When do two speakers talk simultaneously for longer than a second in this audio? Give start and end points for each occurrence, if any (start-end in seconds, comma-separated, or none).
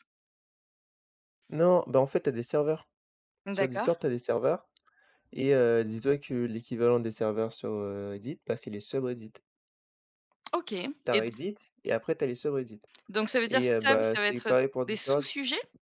13.5-15.3